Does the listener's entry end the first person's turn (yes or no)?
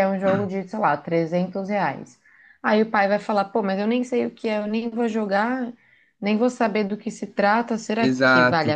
yes